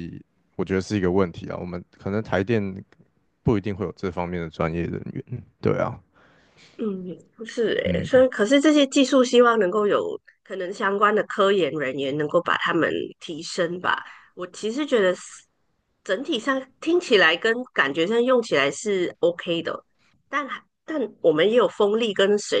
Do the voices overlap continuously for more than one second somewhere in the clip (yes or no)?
no